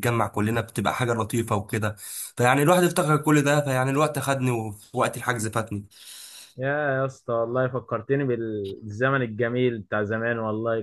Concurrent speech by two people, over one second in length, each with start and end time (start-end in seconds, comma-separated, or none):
none